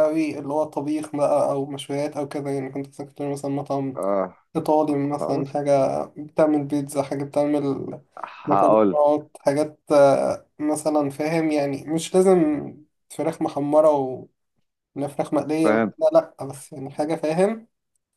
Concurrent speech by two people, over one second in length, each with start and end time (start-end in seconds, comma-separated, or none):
none